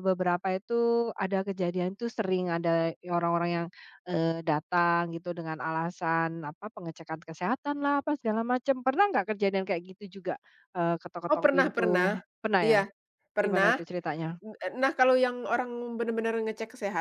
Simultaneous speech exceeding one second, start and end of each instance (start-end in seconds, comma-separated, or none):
none